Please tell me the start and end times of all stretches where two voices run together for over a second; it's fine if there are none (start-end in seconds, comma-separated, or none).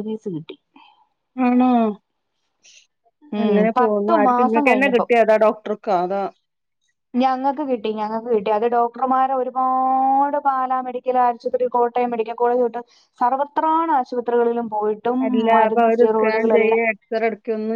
3.4-5.0